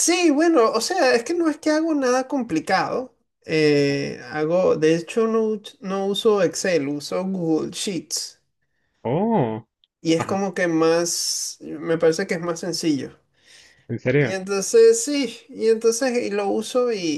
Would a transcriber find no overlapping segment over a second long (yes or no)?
yes